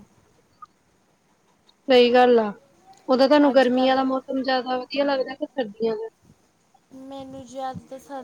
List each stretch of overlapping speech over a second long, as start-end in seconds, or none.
none